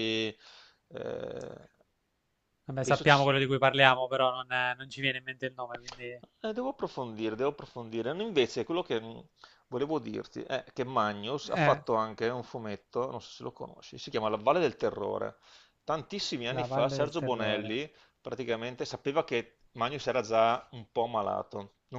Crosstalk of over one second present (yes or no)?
yes